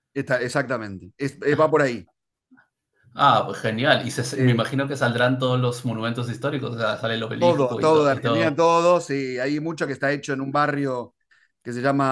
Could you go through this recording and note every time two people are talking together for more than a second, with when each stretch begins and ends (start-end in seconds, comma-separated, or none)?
7.4-8.6